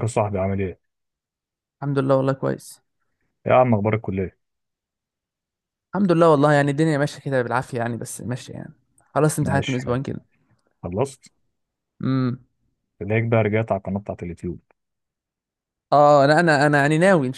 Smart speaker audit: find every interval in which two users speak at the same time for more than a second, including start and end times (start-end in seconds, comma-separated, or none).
none